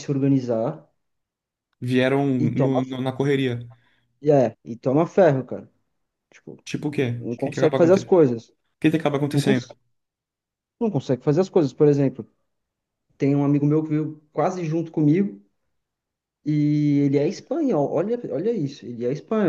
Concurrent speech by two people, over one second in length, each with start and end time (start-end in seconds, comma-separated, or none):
7.1-8.3